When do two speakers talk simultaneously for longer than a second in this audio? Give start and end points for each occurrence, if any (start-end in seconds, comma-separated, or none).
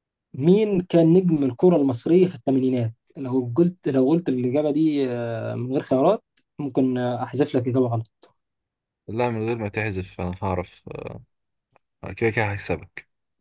none